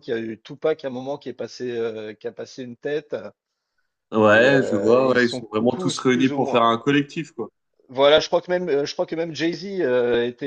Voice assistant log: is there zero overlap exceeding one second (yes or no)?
no